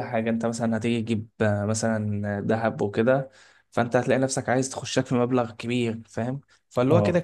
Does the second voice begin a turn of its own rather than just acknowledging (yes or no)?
no